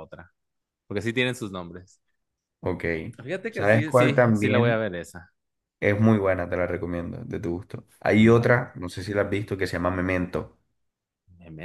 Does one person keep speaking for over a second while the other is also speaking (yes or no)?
yes